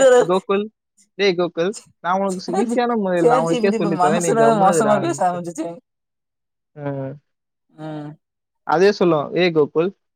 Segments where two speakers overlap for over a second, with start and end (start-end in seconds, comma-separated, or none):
2.5-5.4